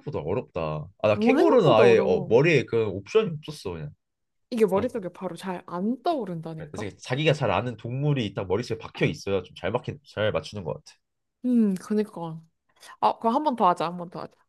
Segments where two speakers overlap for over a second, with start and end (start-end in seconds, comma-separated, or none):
1.1-2.4